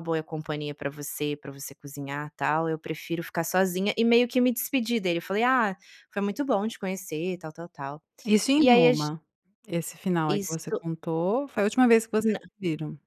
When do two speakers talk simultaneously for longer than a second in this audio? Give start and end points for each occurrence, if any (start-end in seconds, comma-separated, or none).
none